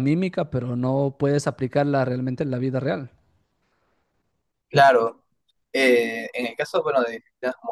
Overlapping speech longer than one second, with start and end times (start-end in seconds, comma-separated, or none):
none